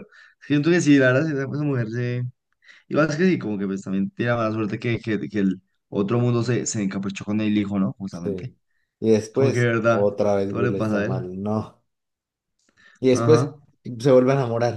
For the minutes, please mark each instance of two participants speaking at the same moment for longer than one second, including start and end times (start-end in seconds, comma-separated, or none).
9.3-11.3